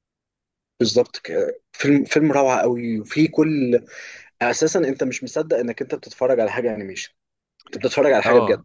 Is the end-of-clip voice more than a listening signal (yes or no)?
yes